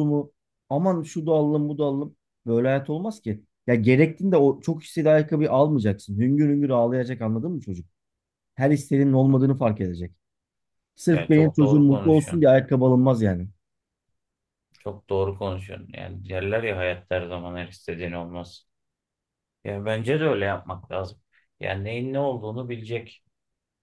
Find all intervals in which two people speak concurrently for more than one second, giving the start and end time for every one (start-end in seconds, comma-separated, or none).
11.1-12.5